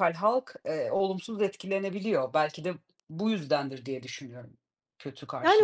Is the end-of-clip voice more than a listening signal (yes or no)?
yes